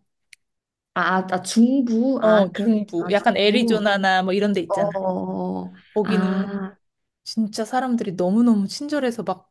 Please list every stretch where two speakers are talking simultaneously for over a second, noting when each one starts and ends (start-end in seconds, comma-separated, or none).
2.2-3.9